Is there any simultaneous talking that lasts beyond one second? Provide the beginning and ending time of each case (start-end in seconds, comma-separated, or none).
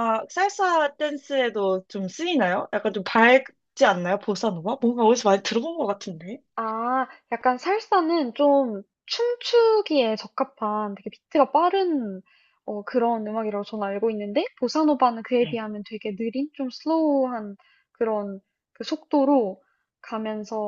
none